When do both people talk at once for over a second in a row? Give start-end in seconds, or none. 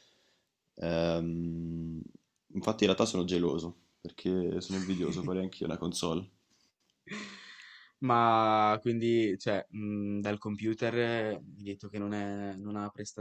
none